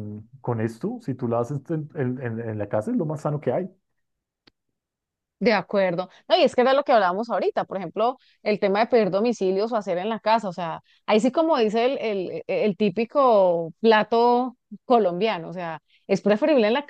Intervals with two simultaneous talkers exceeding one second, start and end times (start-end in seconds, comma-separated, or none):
none